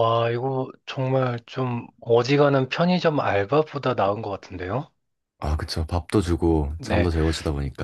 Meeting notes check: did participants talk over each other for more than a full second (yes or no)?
no